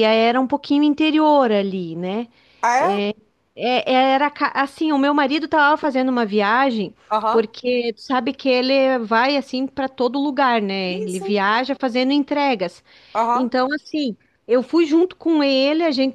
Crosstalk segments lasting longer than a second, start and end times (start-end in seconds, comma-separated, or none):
none